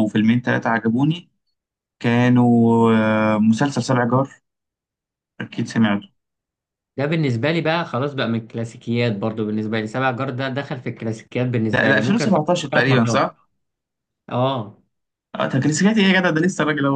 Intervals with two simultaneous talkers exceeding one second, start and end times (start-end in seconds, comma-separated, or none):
11.7-13.2